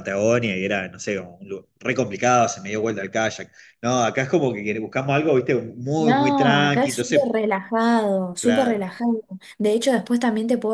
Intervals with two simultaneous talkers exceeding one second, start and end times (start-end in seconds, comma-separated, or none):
6.0-7.4